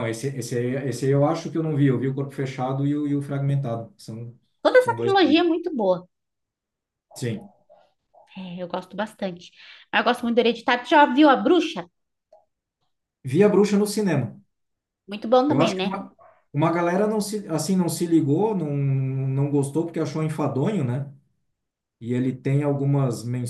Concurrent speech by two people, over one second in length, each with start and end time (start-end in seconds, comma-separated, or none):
none